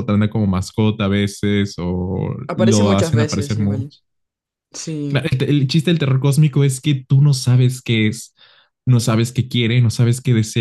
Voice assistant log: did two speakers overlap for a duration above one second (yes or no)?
yes